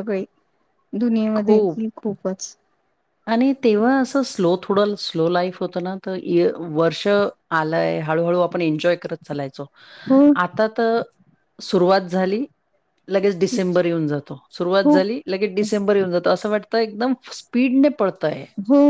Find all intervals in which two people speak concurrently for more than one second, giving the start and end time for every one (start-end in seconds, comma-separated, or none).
none